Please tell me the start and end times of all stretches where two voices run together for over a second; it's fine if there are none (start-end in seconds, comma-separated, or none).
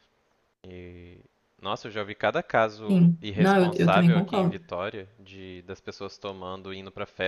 2.9-4.6